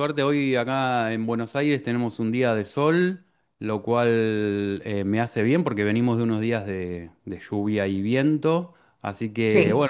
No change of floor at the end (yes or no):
yes